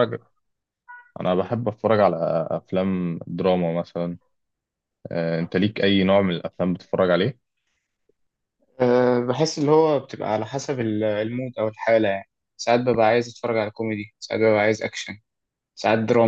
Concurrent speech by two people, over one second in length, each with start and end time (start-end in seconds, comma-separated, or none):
none